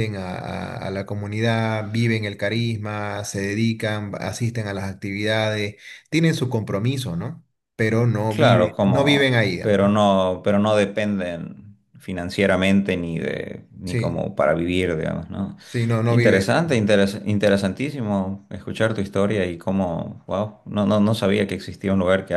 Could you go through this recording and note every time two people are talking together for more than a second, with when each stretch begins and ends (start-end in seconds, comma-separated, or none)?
8.3-10.0